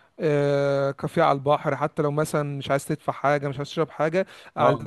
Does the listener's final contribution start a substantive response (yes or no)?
no